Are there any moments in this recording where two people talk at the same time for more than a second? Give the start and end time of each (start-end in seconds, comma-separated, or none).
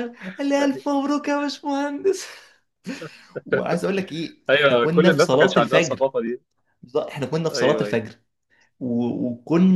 4.5-6.0